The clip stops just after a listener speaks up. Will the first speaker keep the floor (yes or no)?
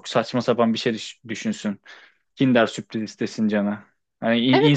no